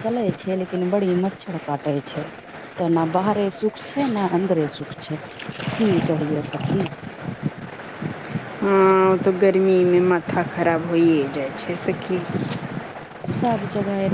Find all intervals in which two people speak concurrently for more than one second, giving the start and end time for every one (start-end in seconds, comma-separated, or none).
none